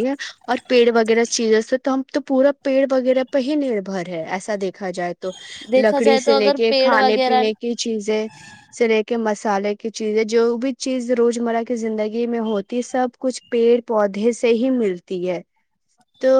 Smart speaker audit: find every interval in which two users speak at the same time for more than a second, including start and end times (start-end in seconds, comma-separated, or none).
5.8-7.4